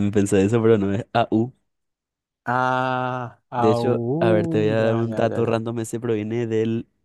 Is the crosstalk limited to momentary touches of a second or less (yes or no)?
no